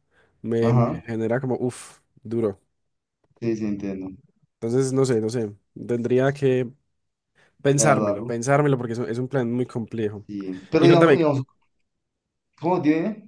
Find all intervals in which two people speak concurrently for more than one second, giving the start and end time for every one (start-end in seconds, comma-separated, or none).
none